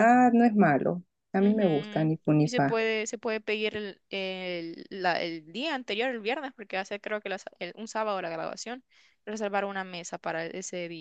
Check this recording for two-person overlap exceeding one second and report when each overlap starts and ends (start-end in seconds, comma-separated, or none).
1.4-2.8